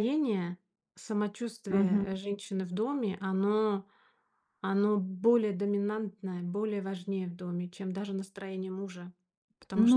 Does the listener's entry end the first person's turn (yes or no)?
yes